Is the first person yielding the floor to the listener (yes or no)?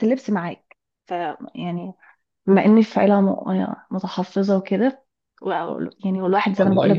no